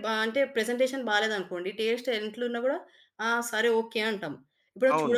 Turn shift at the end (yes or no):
no